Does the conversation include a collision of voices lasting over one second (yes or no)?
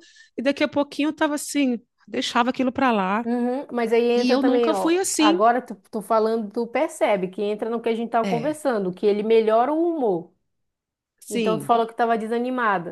yes